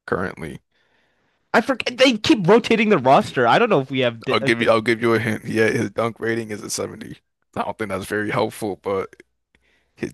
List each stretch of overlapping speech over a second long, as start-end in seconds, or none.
none